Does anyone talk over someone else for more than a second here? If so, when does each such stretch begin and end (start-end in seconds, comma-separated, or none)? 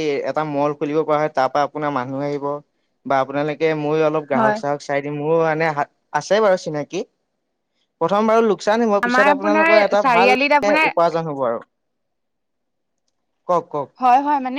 9.1-10.9